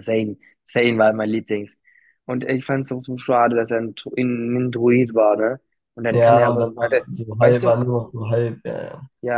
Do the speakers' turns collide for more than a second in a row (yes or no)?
yes